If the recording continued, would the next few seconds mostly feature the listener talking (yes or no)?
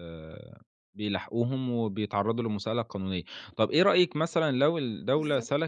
no